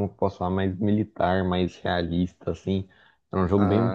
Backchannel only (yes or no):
yes